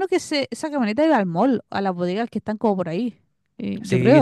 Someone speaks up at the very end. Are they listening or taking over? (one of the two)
taking over